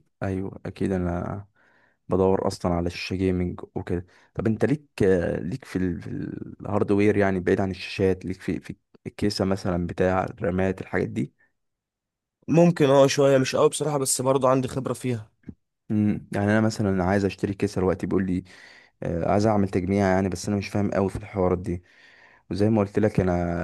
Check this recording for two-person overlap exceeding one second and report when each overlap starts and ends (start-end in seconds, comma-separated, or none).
none